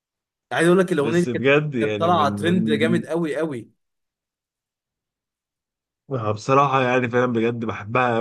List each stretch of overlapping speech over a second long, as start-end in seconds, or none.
1.0-3.0